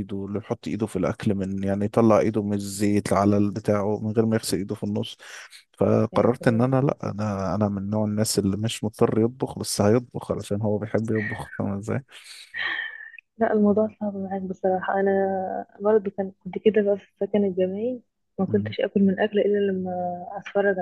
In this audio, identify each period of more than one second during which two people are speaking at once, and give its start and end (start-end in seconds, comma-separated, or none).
none